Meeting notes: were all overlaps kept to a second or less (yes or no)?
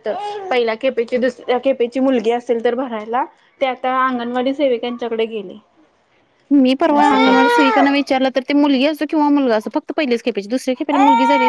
yes